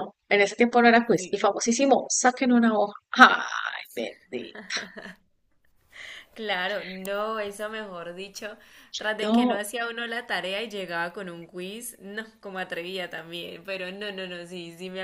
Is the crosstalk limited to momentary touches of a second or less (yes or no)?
yes